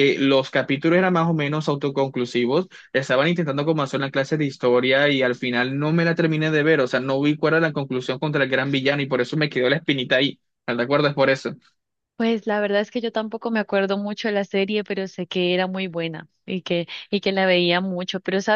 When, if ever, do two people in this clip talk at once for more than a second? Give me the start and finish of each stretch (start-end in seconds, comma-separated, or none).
none